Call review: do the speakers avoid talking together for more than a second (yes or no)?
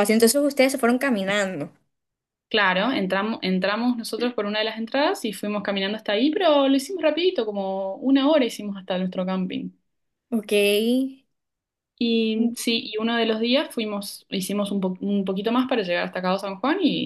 yes